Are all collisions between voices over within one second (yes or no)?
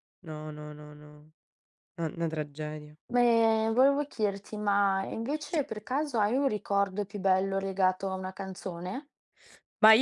yes